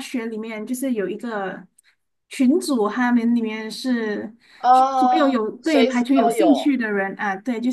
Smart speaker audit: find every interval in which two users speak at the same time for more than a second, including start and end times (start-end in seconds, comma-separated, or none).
4.9-6.5